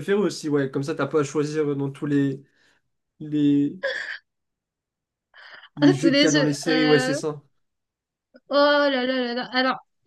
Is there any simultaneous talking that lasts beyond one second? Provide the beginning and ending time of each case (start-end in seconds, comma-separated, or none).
5.8-7.2